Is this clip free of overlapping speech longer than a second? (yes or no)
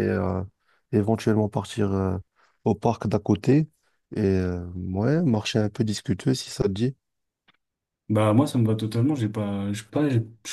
yes